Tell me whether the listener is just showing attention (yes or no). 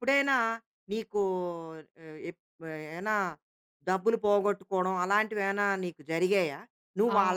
yes